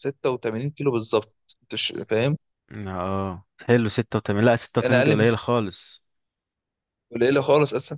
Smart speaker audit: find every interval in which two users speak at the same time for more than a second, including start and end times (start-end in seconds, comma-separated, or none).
none